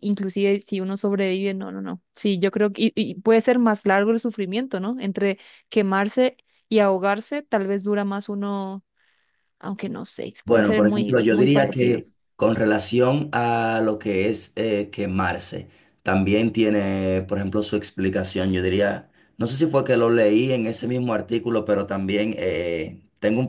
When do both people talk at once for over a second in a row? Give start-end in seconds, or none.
10.4-12.0